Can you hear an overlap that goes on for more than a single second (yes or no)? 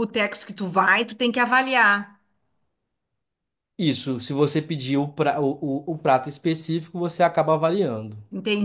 no